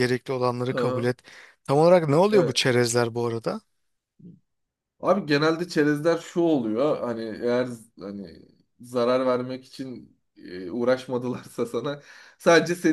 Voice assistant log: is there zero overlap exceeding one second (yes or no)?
yes